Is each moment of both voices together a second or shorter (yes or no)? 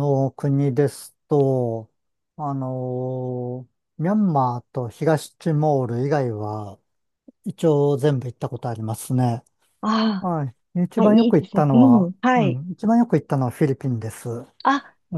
no